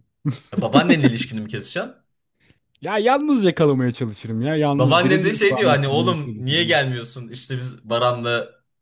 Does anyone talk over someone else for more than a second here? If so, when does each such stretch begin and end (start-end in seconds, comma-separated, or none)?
4.7-6.8